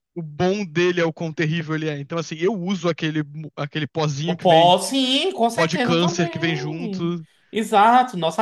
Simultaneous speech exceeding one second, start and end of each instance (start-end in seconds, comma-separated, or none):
5.4-7.2